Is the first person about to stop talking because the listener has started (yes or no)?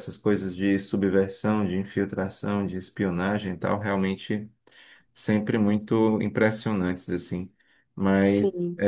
no